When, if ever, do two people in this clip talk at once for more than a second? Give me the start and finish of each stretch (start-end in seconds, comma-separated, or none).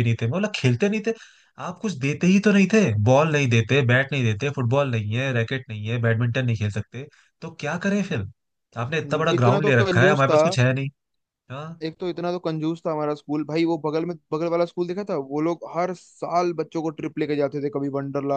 8.8-10.4